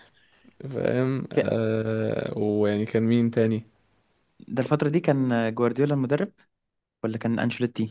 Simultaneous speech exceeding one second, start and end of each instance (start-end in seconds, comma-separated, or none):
none